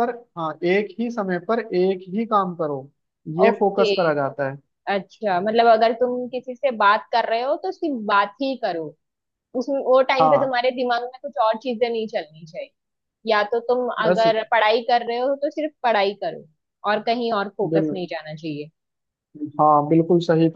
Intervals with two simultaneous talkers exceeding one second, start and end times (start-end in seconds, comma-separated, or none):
none